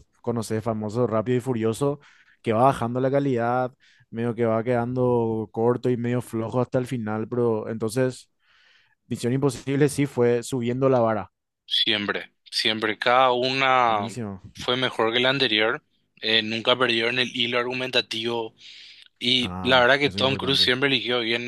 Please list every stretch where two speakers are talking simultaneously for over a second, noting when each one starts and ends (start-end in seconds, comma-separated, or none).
19.4-20.7